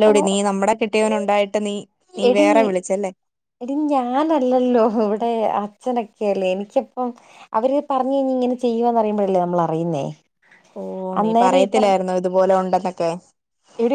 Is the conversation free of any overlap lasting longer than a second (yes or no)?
yes